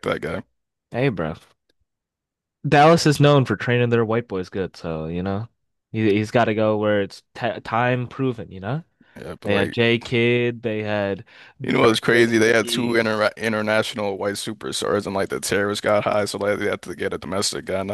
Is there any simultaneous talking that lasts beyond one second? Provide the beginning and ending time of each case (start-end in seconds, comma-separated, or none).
11.7-13.0